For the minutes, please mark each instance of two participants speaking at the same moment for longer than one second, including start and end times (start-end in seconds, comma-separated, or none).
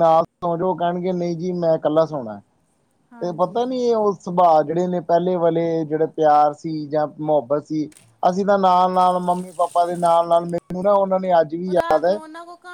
none